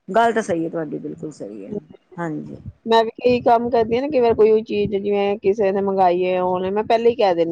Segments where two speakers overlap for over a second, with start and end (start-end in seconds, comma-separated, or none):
none